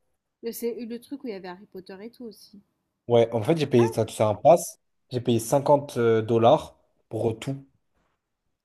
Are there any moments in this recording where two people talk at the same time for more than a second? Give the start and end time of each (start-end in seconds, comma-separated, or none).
none